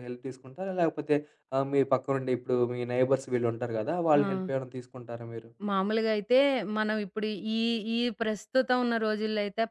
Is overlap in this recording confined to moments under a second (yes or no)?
yes